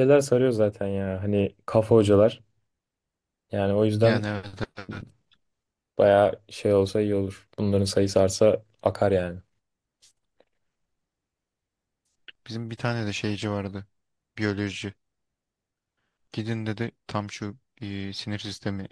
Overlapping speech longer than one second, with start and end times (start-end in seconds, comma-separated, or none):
none